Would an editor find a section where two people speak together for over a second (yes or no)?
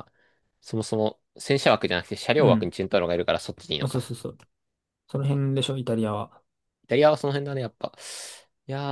no